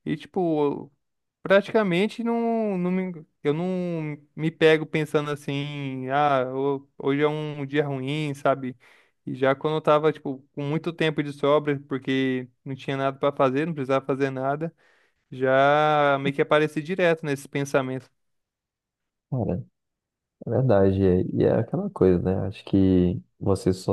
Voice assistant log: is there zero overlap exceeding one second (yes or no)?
yes